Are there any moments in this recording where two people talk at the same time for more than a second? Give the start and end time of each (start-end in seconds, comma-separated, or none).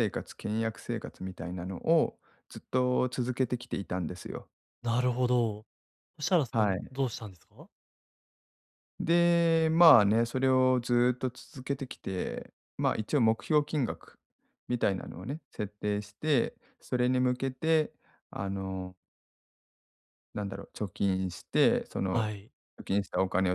none